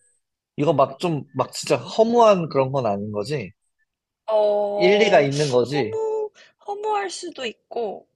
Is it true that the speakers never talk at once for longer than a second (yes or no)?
no